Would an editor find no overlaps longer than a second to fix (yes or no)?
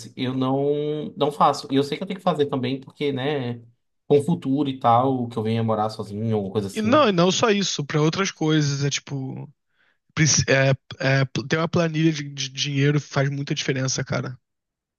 yes